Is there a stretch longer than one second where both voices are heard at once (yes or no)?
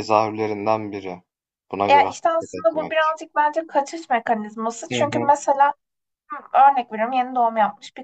yes